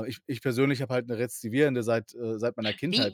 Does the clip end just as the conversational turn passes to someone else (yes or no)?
yes